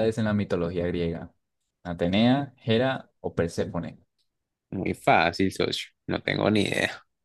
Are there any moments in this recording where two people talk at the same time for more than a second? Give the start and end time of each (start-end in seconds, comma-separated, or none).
none